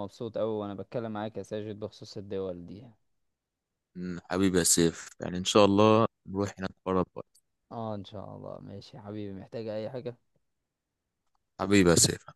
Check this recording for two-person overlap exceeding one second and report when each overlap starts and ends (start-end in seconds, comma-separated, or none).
none